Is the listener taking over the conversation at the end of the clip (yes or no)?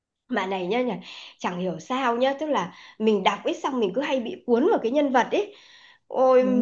no